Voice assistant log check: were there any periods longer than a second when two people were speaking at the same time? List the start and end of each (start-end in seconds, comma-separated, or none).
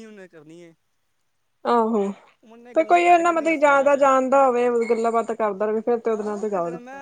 2.7-4.1